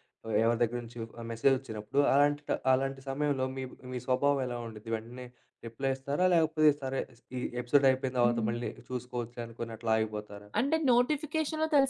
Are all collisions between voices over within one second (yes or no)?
yes